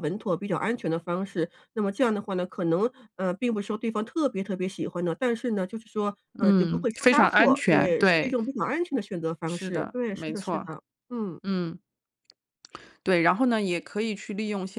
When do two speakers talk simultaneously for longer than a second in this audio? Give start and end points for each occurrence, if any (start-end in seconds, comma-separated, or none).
6.4-8.3, 9.4-10.7